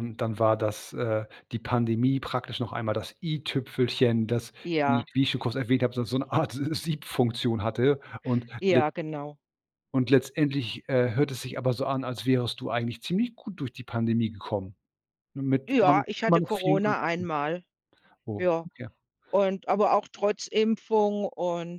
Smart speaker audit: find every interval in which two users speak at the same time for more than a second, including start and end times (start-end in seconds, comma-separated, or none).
15.7-17.3